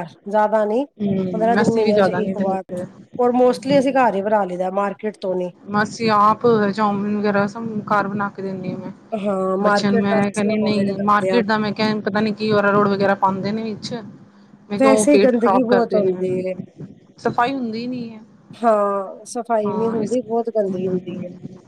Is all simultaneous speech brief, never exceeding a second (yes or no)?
no